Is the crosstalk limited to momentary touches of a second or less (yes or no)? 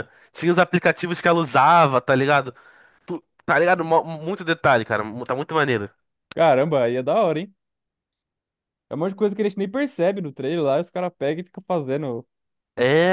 yes